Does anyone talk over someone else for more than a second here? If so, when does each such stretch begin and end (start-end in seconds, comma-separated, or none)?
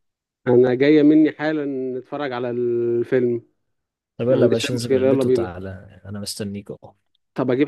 4.3-5.5